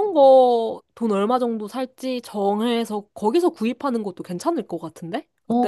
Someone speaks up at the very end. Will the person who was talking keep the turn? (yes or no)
no